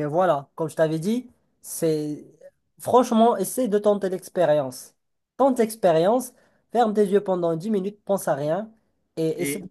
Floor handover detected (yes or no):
no